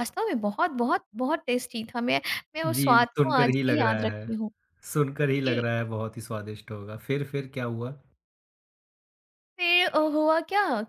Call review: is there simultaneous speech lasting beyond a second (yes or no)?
yes